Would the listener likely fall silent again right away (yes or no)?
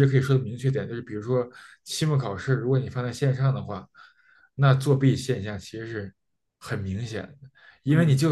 yes